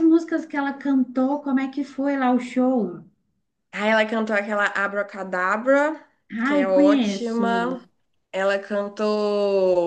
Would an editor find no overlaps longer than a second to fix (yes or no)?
no